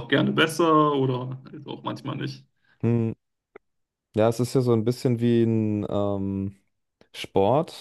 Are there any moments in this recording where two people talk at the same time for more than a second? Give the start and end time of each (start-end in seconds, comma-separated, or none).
none